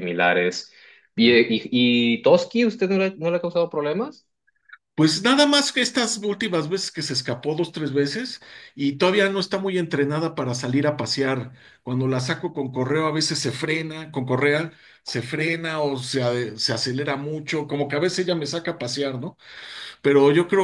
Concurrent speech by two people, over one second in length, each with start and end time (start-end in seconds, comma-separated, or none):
none